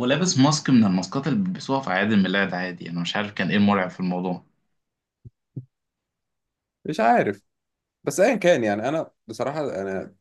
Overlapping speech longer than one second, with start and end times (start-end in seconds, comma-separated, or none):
none